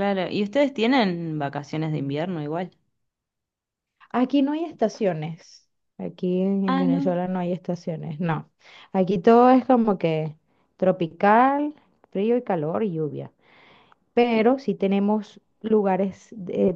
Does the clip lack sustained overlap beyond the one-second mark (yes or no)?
yes